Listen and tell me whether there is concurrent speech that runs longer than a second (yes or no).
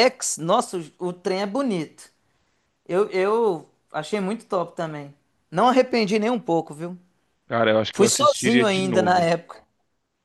yes